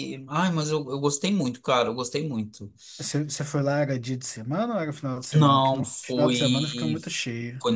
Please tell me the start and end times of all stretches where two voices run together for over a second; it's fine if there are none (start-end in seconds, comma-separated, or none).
5.3-7.0